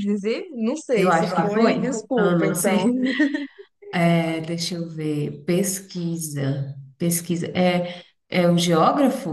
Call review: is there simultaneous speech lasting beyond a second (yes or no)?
yes